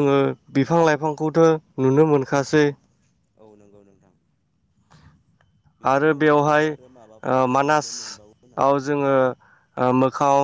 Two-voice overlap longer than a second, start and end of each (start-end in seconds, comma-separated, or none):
5.9-7.9